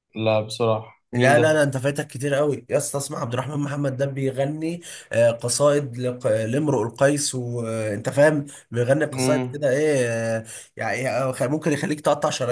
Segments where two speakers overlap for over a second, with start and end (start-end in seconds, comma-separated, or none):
none